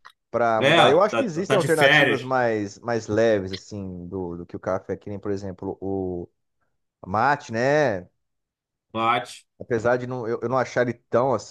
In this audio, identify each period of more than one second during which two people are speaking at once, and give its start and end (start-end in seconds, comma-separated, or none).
0.6-2.3